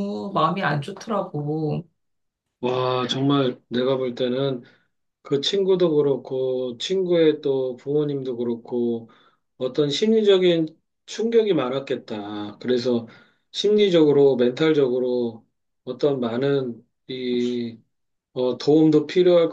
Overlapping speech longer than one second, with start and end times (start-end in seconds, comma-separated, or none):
none